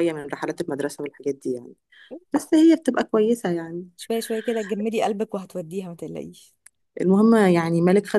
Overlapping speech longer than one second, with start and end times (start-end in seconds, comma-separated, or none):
none